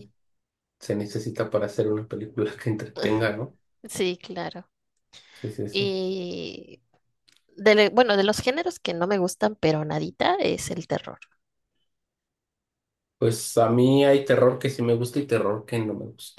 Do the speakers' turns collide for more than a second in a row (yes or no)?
no